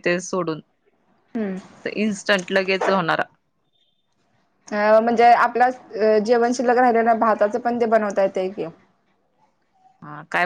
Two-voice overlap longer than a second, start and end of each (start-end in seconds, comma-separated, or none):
none